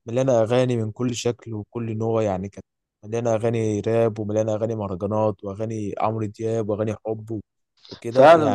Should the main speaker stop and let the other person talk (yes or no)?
yes